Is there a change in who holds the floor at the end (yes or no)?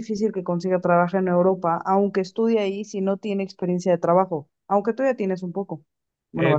yes